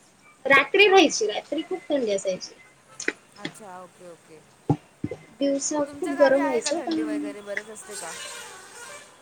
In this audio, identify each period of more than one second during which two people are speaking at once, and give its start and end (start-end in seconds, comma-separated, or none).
5.9-7.3